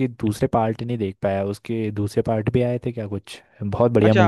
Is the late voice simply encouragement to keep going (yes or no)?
no